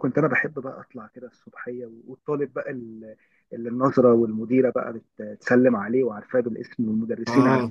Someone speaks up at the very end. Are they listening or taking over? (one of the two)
listening